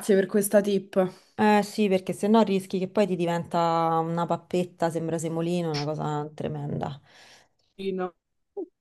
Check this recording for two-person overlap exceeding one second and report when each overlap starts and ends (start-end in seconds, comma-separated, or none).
none